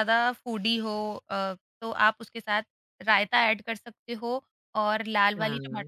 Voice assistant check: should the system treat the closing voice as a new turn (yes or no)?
no